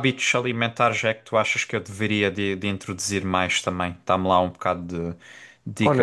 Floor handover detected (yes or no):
yes